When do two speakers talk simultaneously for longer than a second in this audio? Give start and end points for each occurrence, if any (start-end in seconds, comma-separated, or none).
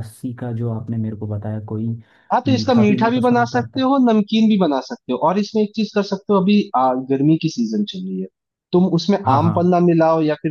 2.5-3.9